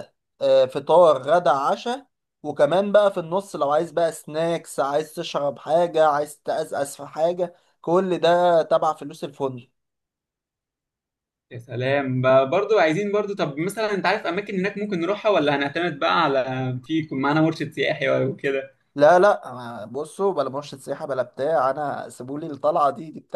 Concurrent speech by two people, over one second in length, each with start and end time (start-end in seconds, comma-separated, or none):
none